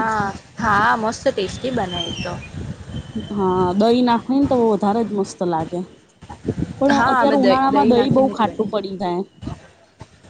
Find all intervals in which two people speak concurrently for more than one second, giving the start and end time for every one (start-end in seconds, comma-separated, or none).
7.0-9.0